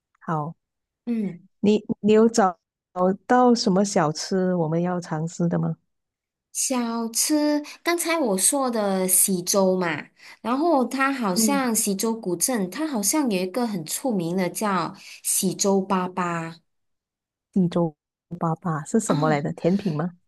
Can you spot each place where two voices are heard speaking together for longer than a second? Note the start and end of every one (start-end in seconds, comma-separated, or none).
none